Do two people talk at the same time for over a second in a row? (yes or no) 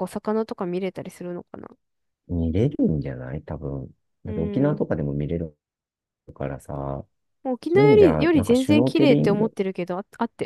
yes